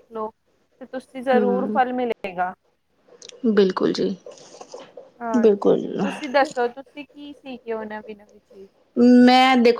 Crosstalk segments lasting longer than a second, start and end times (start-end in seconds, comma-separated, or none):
none